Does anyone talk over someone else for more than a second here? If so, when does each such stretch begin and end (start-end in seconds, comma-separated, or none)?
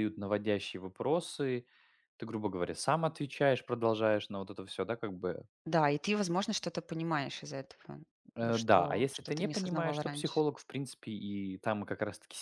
8.4-10.4